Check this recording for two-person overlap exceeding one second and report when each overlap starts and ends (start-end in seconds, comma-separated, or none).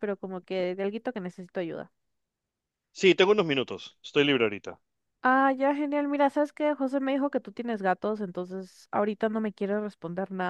none